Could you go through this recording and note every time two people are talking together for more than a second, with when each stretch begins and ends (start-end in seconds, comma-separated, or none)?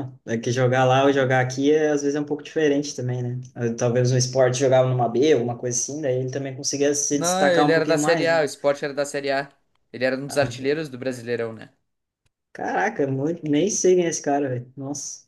7.1-8.4